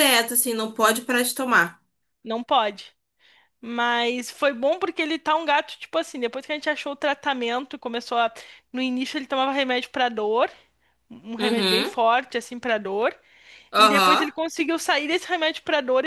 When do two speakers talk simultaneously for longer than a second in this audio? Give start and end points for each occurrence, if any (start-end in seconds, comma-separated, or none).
none